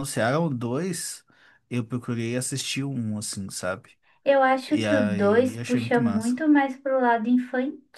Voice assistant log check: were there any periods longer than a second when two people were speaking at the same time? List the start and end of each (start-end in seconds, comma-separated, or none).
4.7-6.3